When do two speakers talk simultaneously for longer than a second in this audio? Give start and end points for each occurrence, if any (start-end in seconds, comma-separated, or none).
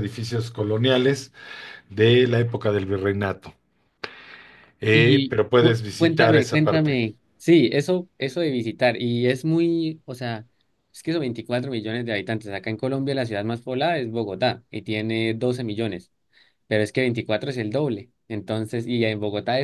4.9-7.0